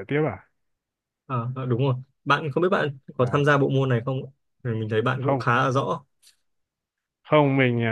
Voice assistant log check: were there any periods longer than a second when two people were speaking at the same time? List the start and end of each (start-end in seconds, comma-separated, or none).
none